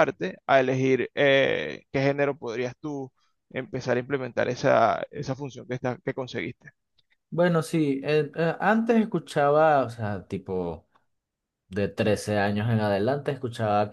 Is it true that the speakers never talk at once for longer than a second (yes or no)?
yes